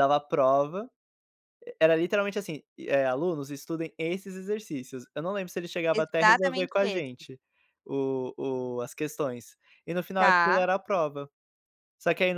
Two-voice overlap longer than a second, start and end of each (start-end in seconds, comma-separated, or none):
5.9-7.3